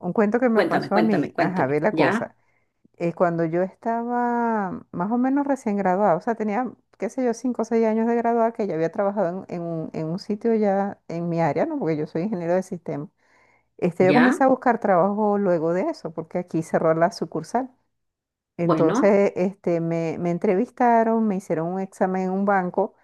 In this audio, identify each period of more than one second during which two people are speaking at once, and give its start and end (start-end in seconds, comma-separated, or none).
0.5-2.3